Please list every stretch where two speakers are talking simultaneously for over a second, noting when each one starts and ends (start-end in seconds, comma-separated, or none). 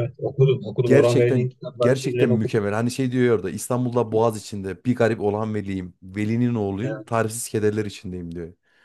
0.8-2.6